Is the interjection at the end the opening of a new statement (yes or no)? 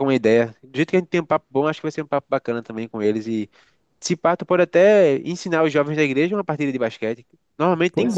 yes